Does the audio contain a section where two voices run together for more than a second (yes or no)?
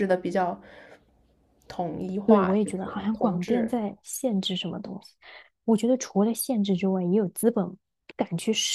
yes